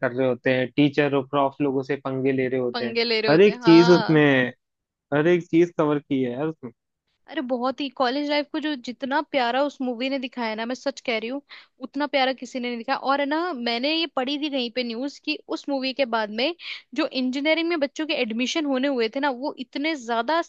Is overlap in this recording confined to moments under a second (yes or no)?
no